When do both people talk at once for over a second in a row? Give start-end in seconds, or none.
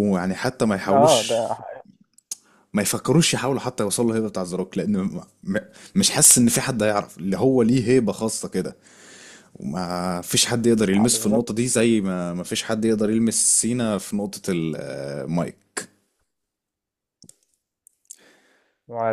none